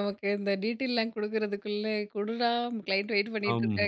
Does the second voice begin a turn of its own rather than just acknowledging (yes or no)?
yes